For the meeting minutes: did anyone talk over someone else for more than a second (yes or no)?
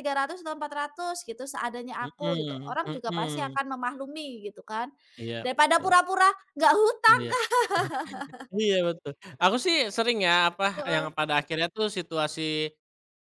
yes